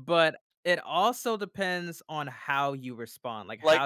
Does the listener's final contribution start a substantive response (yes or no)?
yes